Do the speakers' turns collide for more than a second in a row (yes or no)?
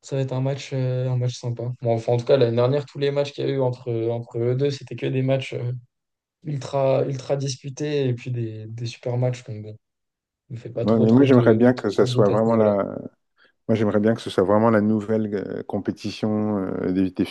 yes